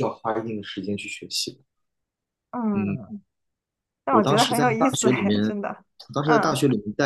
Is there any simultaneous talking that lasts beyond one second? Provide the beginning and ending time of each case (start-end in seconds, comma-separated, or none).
4.1-5.4